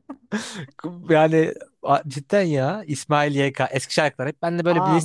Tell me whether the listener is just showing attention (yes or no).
no